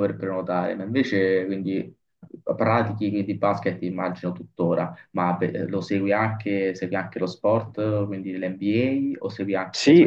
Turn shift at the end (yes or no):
no